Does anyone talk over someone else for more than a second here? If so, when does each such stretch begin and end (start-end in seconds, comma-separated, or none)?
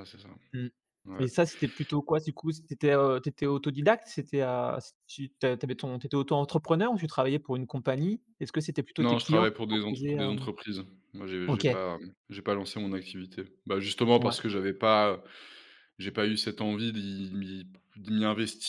9.0-10.5